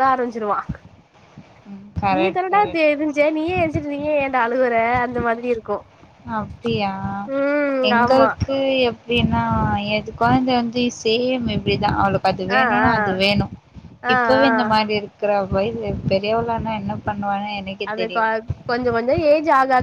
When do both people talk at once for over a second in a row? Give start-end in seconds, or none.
none